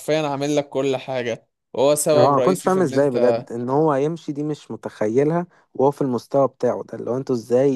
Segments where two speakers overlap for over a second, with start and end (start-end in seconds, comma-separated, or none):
2.1-3.4